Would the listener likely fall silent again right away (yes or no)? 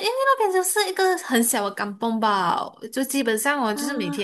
yes